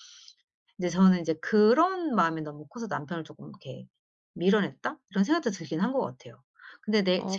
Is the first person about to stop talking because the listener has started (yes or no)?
yes